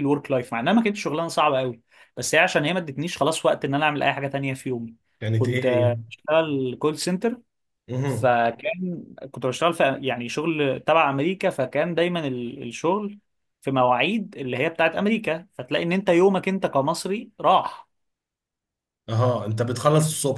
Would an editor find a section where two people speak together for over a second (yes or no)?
no